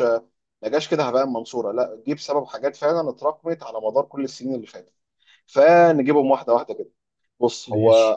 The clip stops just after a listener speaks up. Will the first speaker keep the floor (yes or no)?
yes